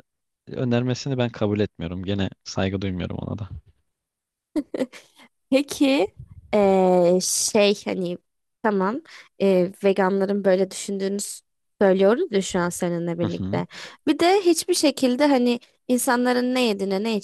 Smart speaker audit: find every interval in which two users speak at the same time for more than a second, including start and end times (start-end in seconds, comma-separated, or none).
none